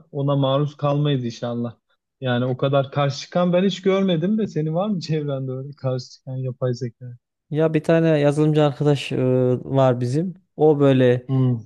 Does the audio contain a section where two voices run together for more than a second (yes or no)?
no